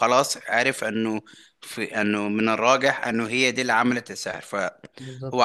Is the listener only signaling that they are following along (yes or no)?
yes